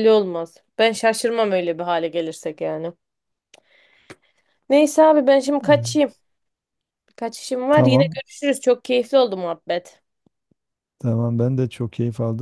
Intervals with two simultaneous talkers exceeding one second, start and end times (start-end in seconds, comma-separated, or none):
none